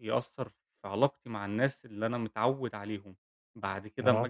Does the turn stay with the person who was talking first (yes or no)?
yes